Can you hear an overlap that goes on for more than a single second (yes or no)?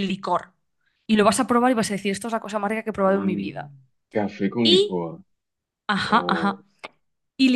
no